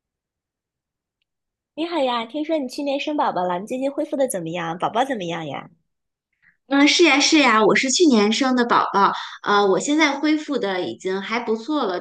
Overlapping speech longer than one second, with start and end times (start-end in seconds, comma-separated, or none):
none